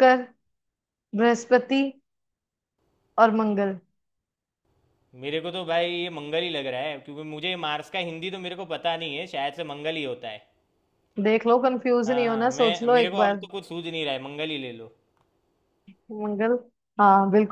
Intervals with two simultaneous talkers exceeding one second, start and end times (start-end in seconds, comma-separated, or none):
12.1-13.4